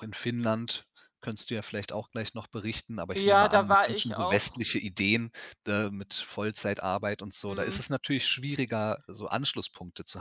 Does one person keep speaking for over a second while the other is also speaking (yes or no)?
yes